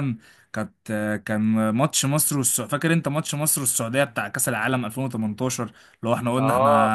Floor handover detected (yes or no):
no